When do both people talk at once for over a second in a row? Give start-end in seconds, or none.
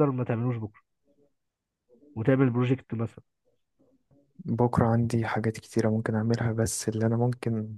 none